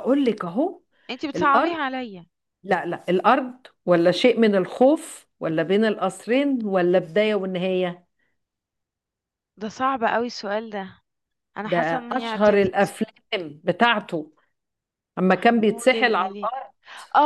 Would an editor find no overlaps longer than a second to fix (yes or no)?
no